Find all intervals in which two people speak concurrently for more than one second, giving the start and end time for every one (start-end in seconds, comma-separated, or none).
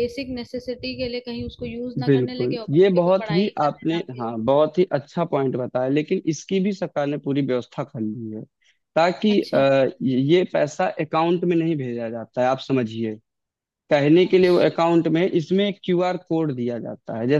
2.0-4.3